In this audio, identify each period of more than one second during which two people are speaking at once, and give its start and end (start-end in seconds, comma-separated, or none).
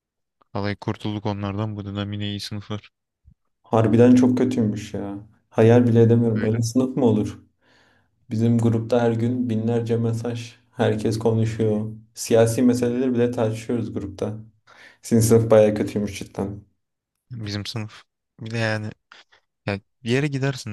none